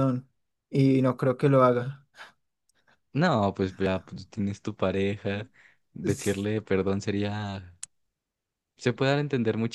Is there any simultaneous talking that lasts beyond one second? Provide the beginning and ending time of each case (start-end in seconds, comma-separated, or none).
none